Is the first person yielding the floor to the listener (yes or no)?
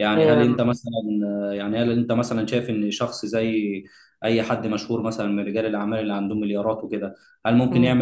no